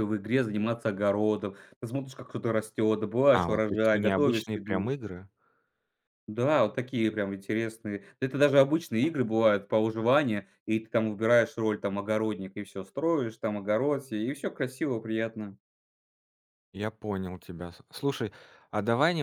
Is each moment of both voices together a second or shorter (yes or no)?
no